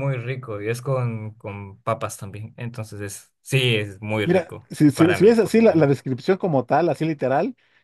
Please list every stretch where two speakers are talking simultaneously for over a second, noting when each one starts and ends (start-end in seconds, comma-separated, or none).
4.2-6.0